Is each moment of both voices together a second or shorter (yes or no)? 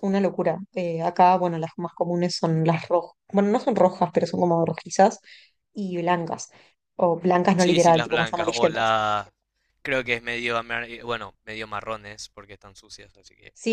no